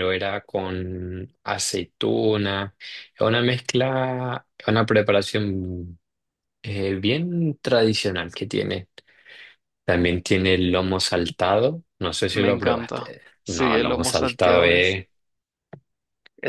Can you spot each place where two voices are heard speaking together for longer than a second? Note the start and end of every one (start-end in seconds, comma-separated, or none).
12.3-14.9